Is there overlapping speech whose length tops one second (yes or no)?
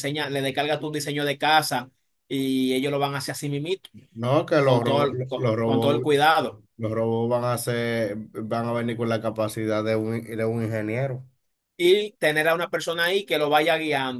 yes